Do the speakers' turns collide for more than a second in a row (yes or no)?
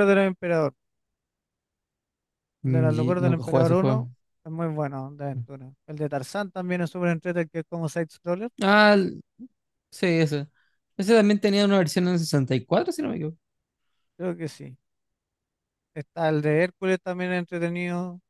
yes